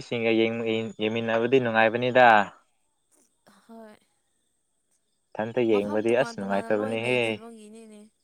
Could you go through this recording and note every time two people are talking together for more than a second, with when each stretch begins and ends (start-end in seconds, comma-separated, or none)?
5.7-7.4